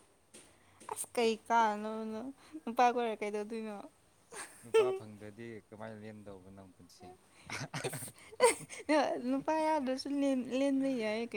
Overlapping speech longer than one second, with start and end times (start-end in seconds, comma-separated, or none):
none